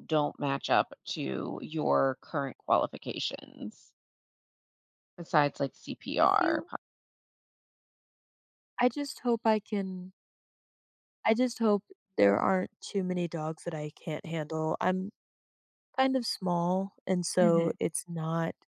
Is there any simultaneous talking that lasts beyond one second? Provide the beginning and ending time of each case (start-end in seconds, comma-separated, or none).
none